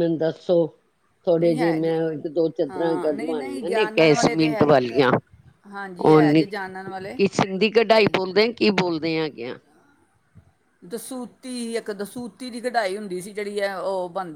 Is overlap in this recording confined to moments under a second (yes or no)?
no